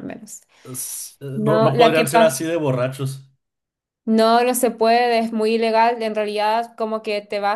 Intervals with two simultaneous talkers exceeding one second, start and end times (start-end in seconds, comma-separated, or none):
1.3-2.5